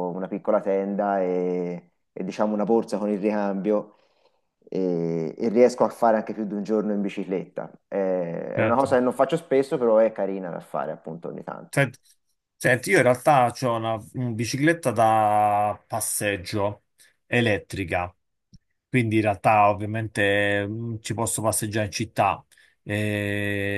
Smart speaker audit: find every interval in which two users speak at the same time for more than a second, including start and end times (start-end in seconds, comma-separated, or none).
none